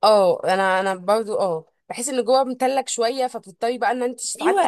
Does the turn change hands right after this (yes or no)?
yes